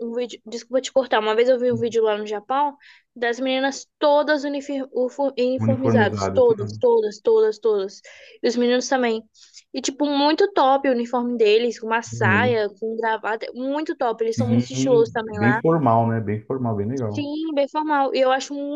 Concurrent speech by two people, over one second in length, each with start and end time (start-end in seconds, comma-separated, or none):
5.6-6.8, 14.3-15.6